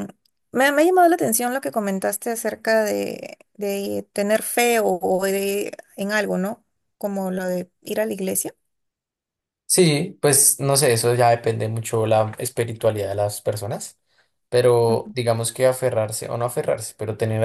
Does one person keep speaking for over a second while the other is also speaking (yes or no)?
no